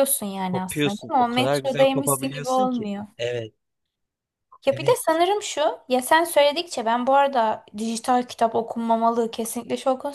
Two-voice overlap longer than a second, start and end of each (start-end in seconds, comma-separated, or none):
0.5-3.0